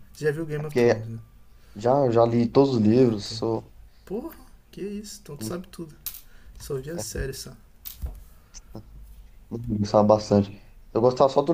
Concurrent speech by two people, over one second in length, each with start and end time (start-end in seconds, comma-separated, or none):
none